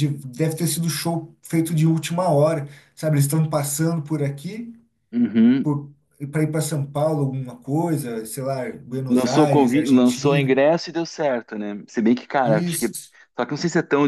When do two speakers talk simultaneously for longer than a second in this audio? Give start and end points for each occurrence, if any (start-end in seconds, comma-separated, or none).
9.1-10.6